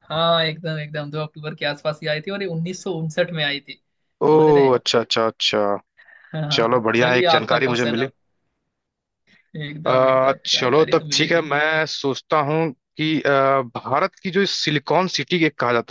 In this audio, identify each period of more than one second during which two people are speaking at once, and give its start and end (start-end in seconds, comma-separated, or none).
6.6-8.1, 9.9-11.4